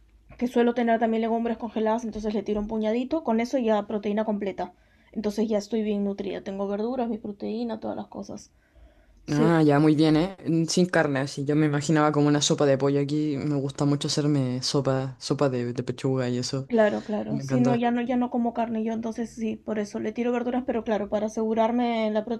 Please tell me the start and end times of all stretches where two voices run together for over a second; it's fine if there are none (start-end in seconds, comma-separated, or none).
none